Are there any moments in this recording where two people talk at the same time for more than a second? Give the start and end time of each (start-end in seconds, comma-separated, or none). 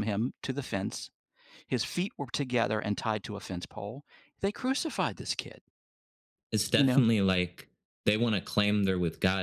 none